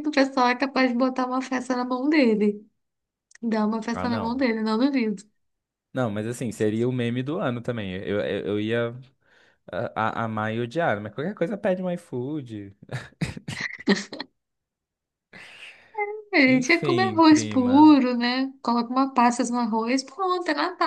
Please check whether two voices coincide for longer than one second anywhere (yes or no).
yes